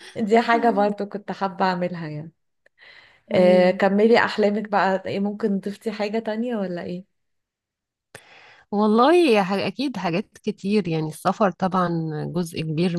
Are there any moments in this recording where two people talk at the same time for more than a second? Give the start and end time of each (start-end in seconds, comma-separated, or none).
none